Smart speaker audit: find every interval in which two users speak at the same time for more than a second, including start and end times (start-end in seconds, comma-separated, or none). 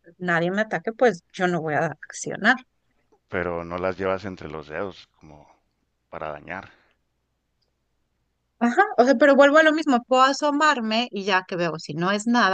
none